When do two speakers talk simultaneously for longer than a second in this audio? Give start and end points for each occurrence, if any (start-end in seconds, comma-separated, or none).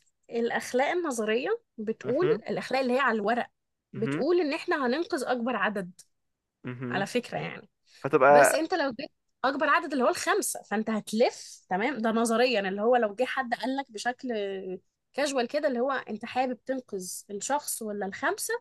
none